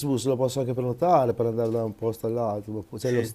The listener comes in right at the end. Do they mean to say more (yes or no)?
no